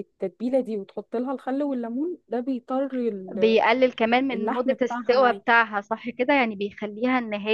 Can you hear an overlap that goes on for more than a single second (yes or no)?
yes